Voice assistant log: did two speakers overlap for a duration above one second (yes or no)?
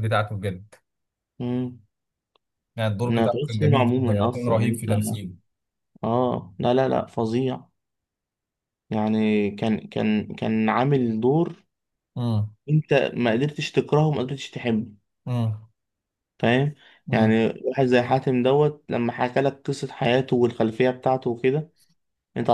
yes